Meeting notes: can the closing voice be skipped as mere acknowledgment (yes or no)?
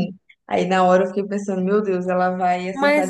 no